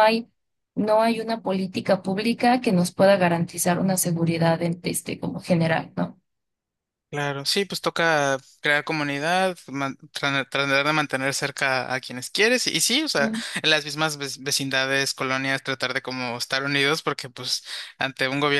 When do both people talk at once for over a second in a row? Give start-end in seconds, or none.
none